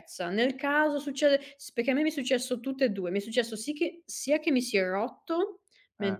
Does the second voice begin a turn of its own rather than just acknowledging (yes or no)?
no